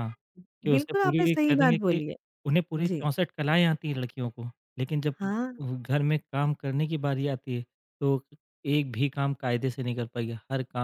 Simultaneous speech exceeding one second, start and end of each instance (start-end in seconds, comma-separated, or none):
0.7-2.0